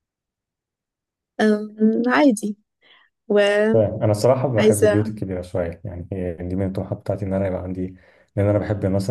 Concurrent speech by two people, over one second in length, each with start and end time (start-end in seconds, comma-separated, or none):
none